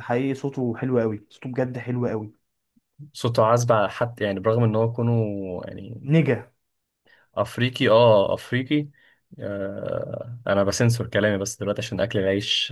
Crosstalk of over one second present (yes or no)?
no